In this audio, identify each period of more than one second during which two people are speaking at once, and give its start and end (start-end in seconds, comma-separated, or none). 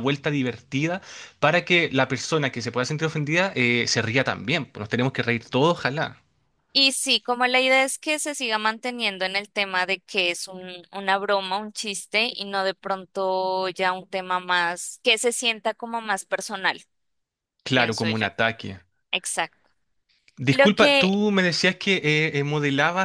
none